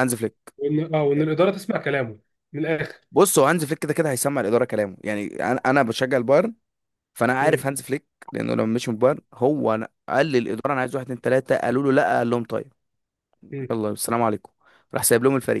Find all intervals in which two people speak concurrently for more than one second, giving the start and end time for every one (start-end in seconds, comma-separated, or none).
none